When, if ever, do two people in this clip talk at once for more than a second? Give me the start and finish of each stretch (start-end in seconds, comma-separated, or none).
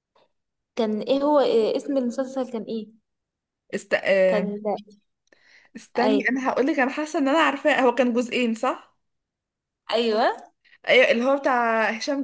none